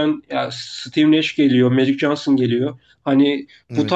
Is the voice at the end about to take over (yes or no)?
no